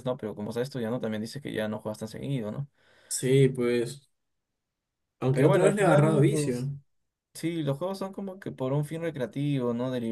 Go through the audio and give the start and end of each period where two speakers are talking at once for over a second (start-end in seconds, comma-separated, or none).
5.3-6.7